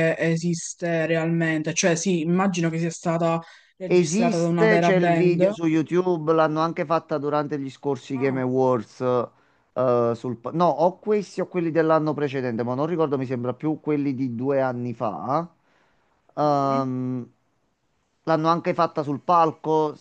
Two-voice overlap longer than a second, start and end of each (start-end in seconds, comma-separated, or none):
3.9-5.5